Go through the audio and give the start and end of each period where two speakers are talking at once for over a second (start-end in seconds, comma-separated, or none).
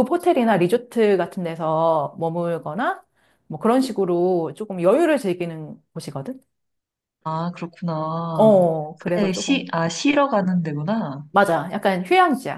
8.3-9.7